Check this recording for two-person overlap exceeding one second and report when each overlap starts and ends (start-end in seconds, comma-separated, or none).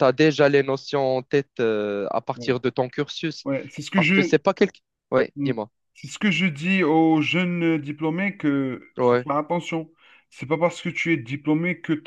none